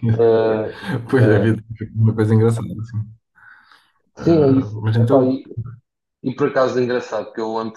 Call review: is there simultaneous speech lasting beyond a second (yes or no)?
yes